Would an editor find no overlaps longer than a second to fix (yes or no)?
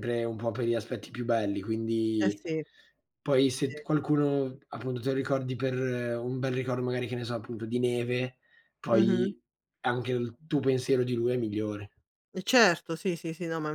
yes